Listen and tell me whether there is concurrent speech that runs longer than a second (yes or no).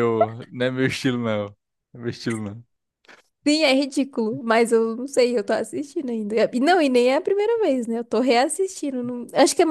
no